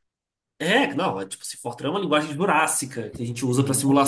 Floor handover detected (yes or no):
no